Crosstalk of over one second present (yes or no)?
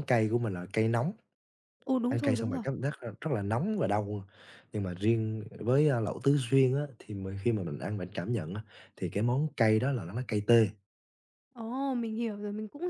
no